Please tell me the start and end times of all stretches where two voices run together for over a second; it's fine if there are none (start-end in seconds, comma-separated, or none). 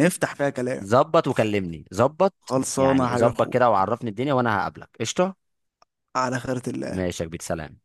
2.4-3.8